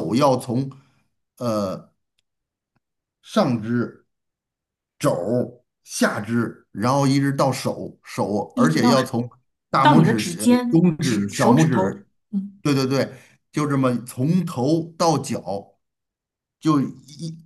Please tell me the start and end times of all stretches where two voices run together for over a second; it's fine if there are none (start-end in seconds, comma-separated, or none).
9.8-12.1